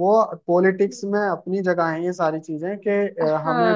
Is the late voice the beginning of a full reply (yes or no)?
yes